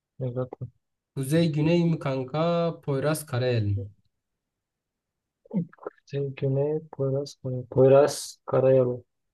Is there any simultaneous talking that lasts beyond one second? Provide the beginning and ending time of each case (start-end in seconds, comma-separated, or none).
none